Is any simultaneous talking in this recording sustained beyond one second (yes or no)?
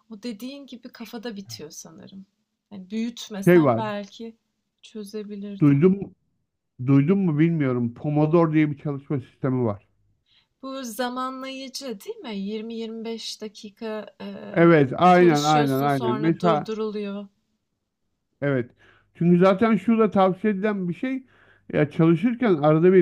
yes